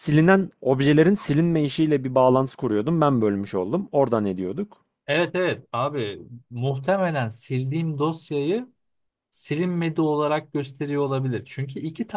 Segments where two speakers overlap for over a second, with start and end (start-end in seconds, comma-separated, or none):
none